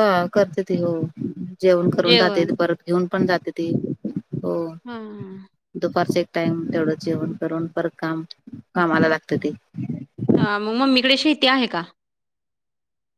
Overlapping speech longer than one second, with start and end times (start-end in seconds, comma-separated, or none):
none